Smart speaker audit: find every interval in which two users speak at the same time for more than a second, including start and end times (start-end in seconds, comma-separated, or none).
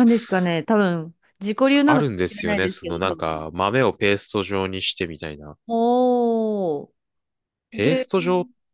1.9-3.5